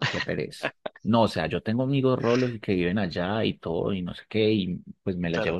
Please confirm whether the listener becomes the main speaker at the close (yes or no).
no